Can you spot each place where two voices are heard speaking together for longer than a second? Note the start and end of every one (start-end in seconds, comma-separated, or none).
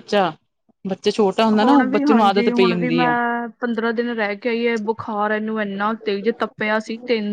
1.6-3.1